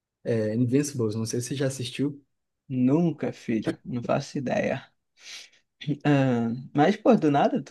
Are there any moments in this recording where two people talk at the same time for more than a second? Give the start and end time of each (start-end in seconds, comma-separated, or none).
none